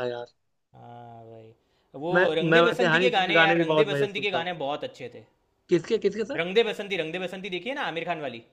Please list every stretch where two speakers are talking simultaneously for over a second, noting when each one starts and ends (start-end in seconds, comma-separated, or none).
2.1-4.5